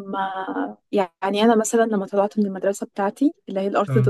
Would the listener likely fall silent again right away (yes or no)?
yes